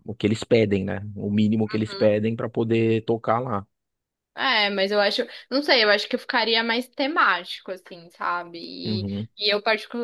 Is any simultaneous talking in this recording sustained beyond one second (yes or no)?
no